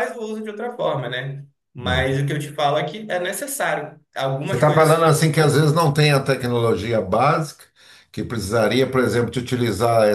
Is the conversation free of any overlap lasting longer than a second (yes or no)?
yes